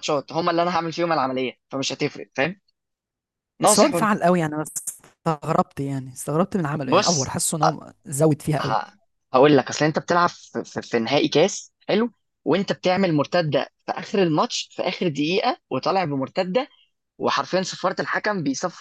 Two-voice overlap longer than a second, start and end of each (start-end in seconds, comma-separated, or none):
none